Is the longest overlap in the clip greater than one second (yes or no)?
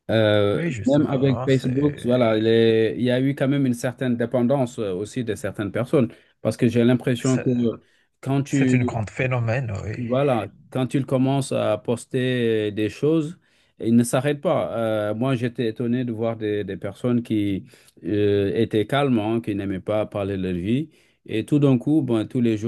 yes